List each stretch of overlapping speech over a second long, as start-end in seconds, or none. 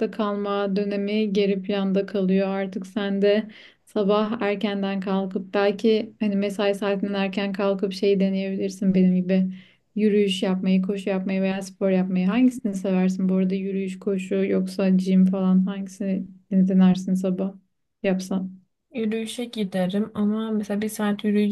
none